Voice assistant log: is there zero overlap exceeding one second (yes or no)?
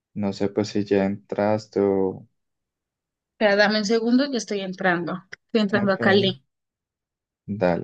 yes